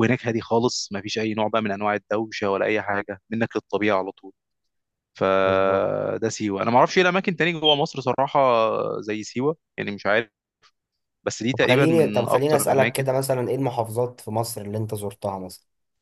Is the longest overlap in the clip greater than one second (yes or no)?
yes